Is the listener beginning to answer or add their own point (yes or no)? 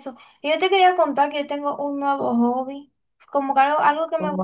no